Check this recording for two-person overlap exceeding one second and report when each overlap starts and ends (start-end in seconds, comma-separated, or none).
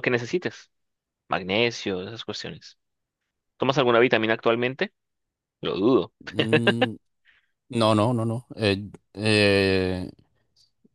none